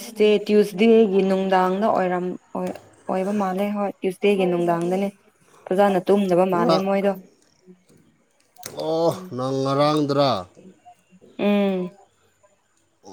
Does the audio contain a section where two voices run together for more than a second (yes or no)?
no